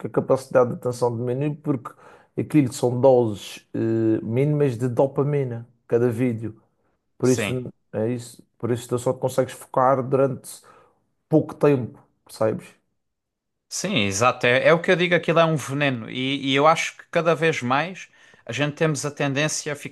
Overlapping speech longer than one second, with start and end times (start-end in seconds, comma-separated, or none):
none